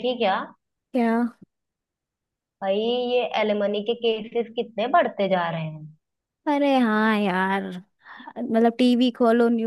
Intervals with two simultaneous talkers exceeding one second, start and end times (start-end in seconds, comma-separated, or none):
none